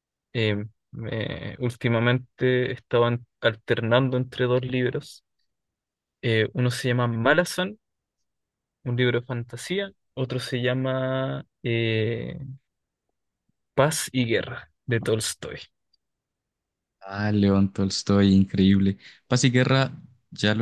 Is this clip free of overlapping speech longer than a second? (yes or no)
yes